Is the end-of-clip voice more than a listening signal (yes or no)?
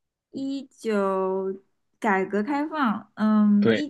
no